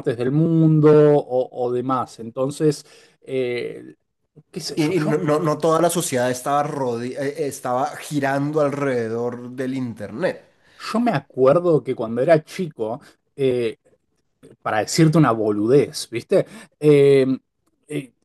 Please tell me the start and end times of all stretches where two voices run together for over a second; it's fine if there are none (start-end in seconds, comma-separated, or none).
none